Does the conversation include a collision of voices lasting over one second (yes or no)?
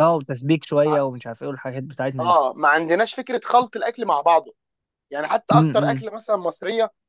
no